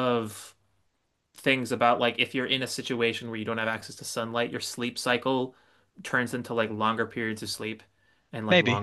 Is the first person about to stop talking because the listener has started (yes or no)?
no